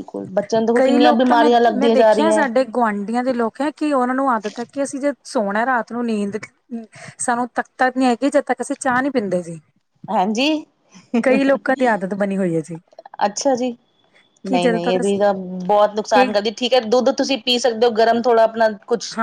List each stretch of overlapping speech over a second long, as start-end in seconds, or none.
0.8-2.5